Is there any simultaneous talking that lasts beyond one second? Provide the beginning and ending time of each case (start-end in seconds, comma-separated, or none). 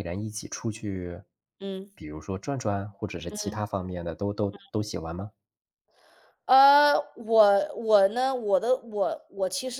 none